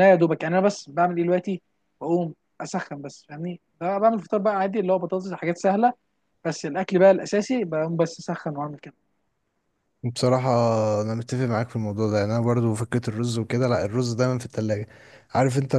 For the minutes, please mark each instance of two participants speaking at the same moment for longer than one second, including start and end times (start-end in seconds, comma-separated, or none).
none